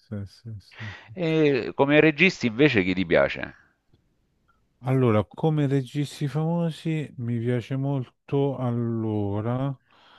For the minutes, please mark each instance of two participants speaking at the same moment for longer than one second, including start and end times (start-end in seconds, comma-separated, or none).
none